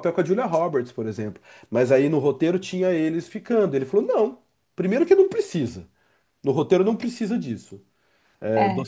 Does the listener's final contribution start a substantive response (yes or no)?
no